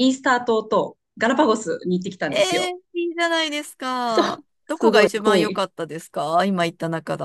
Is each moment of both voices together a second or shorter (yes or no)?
no